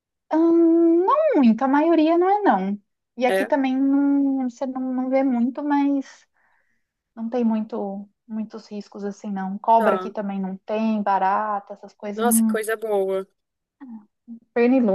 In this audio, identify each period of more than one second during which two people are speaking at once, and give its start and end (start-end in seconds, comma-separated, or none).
none